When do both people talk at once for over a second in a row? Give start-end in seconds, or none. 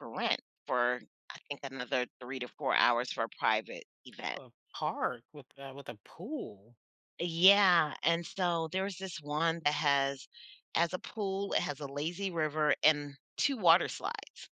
none